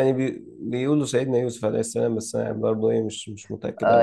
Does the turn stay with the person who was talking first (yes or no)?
no